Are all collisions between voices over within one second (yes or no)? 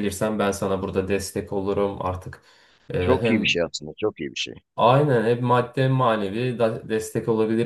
yes